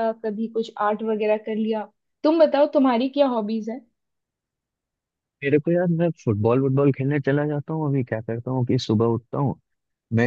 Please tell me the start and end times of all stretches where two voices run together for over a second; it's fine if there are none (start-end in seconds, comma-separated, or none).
none